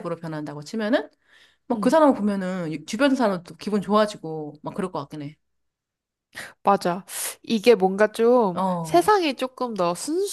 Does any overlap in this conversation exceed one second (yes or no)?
no